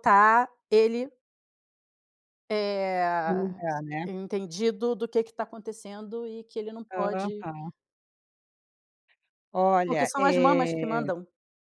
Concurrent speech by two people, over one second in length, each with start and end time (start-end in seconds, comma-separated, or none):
9.8-11.1